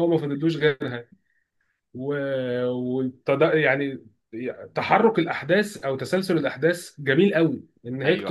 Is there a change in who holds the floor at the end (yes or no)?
no